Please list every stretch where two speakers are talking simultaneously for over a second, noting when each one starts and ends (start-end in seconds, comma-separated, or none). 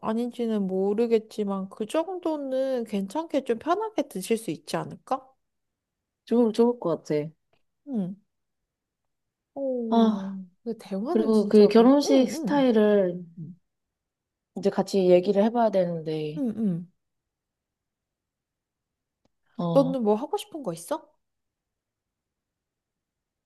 11.1-12.7